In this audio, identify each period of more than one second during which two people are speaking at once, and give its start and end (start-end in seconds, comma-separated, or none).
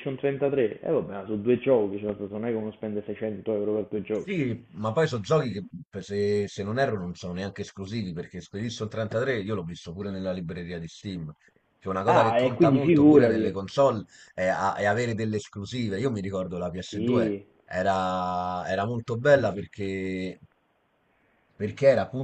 12.1-13.5